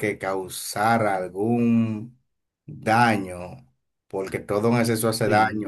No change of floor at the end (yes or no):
yes